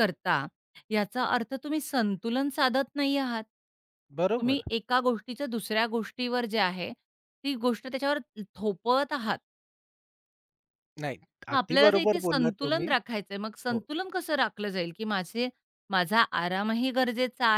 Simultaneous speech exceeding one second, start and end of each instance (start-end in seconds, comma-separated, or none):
11.5-12.9